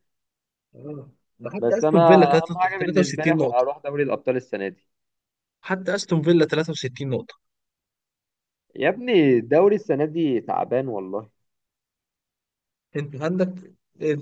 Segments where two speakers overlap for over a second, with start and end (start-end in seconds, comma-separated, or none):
1.6-3.6